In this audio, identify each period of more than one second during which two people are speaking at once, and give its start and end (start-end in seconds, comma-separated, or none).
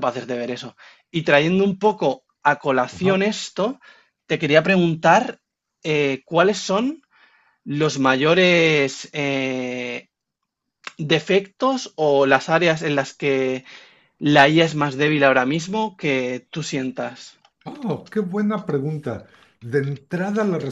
none